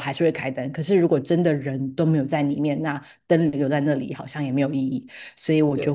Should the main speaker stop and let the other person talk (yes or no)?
no